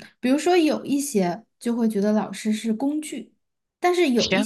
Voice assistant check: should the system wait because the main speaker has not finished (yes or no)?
yes